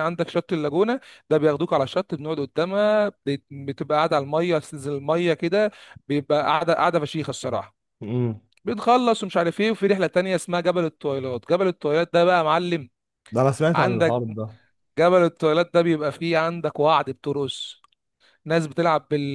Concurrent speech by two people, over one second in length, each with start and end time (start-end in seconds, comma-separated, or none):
none